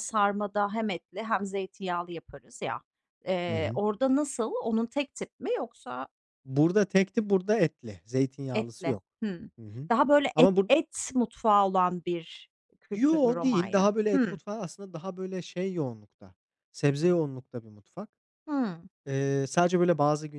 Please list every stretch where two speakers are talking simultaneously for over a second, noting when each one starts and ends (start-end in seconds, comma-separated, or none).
12.9-14.4